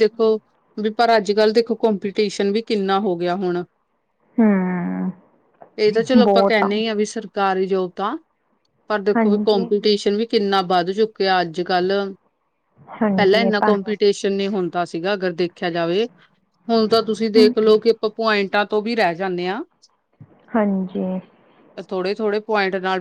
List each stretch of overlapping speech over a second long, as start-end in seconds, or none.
none